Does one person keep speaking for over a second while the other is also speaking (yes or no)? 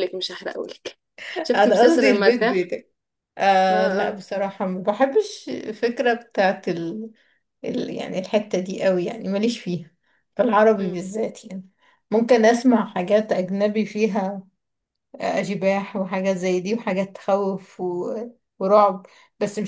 yes